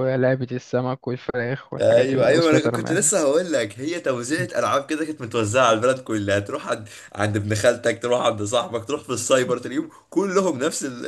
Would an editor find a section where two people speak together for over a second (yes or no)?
yes